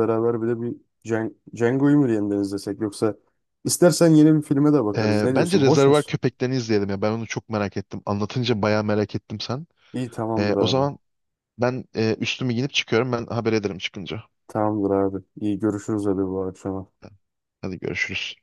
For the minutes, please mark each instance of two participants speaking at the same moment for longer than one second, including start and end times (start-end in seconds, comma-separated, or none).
5.0-6.2